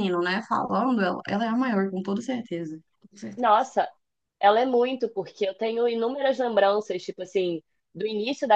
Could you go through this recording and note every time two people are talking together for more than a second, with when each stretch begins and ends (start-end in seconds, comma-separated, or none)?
none